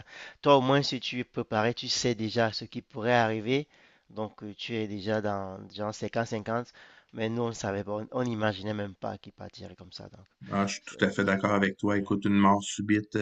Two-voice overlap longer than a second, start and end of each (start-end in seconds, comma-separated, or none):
10.8-12.0